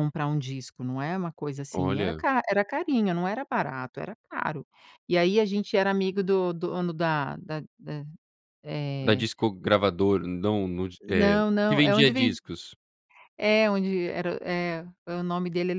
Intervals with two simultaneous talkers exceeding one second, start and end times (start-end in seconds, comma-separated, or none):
11.1-12.4